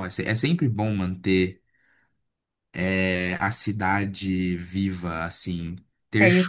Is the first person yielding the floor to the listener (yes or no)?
no